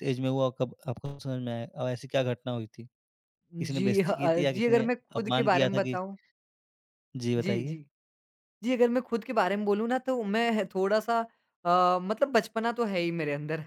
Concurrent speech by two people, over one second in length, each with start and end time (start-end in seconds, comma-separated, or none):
3.6-6.0